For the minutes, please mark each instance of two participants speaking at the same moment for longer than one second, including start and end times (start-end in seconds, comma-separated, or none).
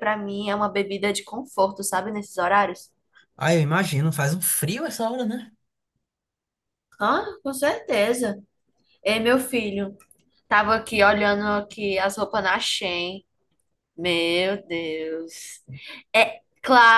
none